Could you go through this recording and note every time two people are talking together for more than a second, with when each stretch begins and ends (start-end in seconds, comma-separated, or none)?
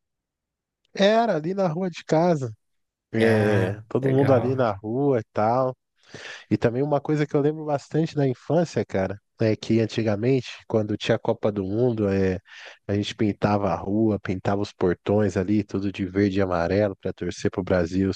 3.2-4.7